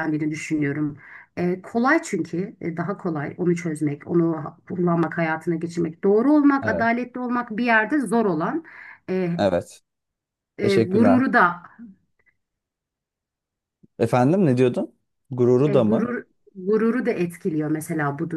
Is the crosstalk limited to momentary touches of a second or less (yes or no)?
yes